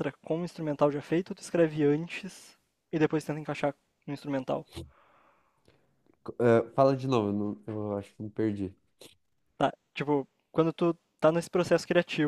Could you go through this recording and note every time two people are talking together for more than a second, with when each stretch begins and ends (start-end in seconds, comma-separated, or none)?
none